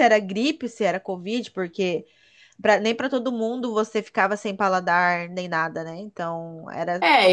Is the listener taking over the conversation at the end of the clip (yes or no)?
yes